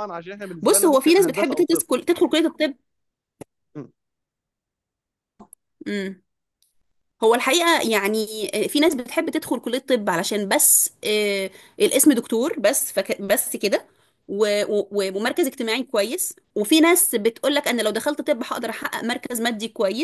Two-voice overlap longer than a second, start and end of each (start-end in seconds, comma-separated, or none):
0.6-1.9